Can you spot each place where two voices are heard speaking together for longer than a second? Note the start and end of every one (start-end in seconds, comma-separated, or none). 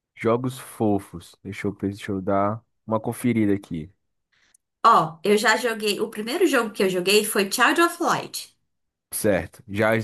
none